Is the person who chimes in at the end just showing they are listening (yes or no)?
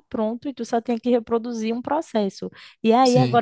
yes